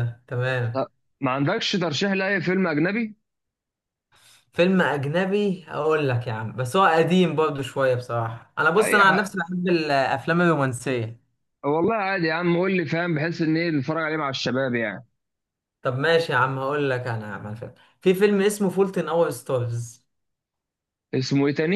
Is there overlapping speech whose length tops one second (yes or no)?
no